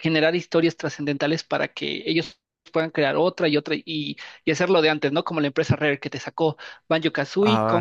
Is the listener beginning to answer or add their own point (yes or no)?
no